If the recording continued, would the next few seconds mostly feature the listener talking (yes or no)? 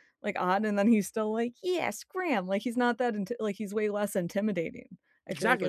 yes